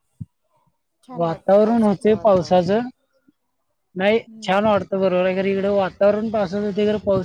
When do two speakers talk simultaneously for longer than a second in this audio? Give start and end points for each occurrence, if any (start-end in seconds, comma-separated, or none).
1.2-2.8